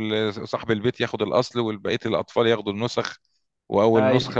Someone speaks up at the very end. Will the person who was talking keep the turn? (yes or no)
yes